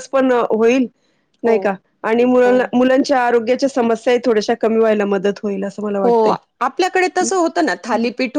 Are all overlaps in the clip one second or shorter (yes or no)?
yes